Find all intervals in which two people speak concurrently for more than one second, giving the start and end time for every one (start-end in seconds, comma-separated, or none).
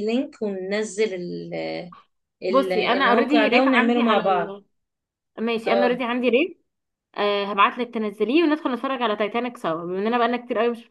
2.5-4.6